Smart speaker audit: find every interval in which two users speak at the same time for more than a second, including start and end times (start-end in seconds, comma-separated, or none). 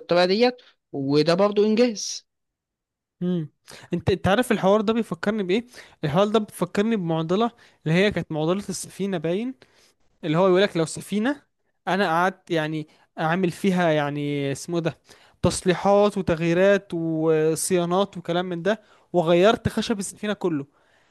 none